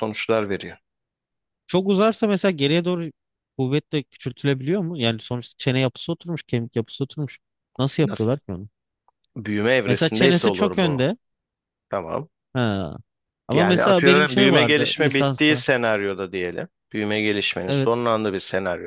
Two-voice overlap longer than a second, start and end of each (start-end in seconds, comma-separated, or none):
9.9-11.1, 13.5-15.6